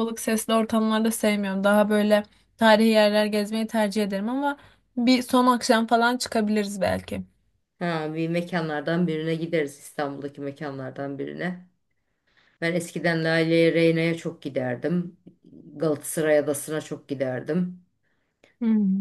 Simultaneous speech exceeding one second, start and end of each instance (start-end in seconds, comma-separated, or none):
none